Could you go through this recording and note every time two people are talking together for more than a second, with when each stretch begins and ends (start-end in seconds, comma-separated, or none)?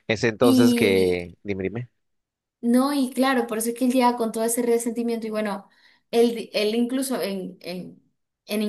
none